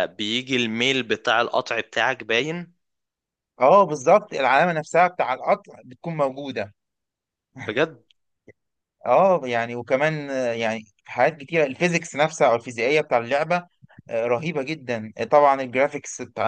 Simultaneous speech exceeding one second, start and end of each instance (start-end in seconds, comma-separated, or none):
none